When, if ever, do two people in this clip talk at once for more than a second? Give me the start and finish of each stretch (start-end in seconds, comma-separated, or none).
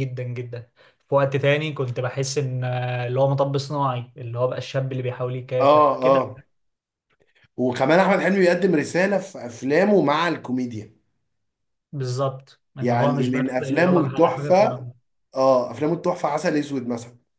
12.8-14.9